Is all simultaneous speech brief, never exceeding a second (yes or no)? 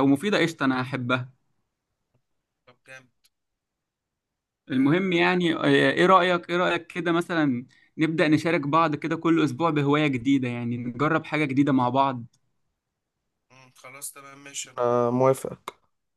yes